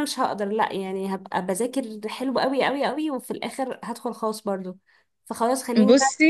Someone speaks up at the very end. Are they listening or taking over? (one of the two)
listening